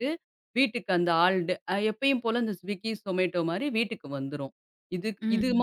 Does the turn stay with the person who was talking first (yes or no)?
yes